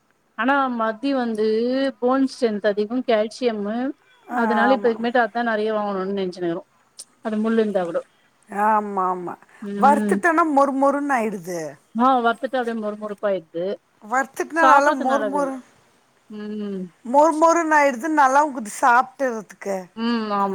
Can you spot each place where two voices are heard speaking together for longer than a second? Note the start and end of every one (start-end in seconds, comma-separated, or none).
none